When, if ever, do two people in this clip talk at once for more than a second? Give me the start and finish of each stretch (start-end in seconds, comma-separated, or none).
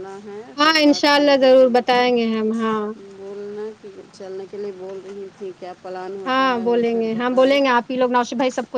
0.6-2.0